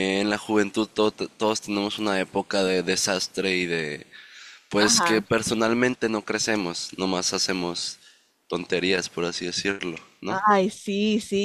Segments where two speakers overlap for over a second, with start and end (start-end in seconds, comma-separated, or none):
none